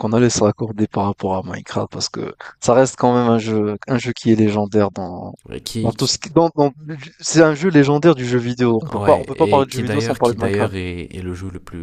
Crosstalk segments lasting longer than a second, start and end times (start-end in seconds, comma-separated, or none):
8.9-10.7